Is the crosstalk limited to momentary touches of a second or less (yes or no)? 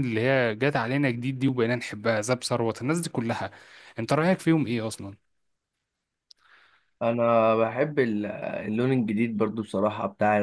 yes